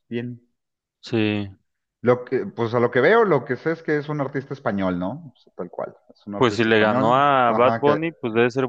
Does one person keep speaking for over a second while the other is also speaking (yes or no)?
yes